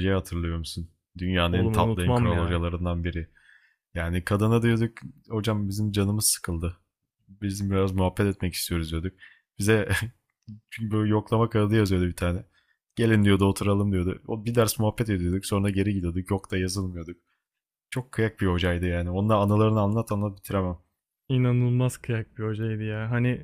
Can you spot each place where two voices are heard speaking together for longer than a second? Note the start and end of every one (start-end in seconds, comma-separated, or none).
1.5-2.7